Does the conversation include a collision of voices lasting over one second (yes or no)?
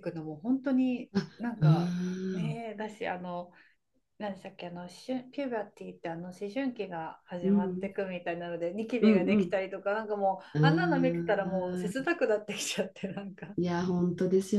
yes